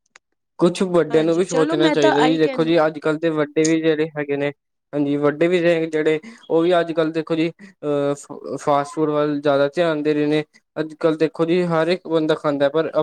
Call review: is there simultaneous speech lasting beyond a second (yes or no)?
yes